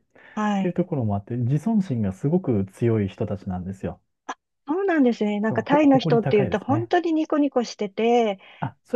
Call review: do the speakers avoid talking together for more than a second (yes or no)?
no